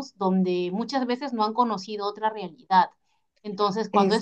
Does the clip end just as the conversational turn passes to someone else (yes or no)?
no